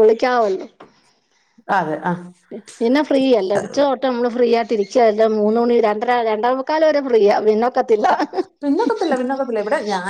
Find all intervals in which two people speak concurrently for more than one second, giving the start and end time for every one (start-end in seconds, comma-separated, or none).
none